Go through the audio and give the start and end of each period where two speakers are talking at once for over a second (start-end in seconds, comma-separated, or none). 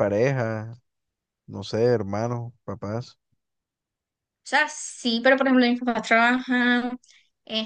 none